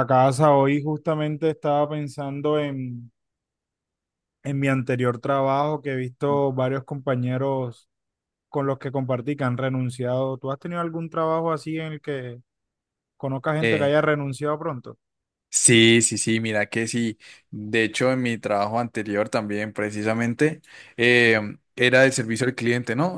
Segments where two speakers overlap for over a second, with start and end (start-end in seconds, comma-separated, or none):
none